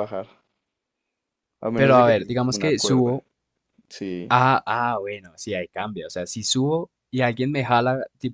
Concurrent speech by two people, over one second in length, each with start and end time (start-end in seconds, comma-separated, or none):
1.7-3.1